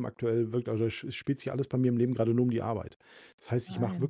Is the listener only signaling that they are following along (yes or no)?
yes